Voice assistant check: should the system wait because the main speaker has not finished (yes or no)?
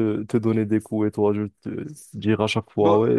yes